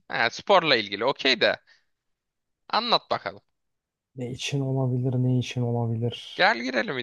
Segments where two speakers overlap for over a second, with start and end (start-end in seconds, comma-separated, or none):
none